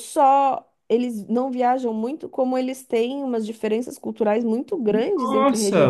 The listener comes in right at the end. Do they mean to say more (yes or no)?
yes